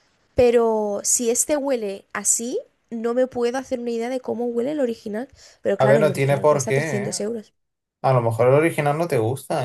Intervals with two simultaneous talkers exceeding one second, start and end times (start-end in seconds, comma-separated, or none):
5.8-7.2